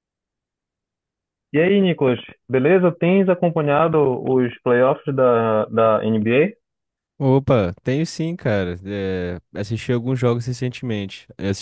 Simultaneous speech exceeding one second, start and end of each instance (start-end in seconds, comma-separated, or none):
none